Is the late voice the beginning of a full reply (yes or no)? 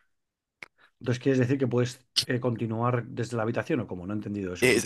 yes